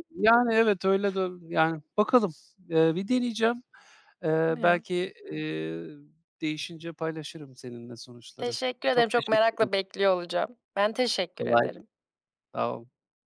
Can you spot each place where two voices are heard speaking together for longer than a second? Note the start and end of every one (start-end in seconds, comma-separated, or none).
8.4-9.8